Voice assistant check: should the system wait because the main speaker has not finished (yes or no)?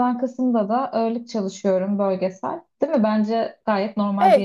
no